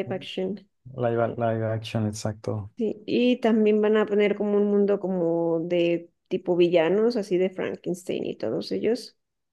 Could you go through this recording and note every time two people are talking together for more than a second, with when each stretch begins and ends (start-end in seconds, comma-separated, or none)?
none